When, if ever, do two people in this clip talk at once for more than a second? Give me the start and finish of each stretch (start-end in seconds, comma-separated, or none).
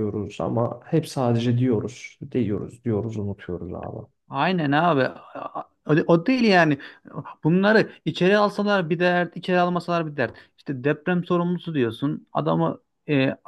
none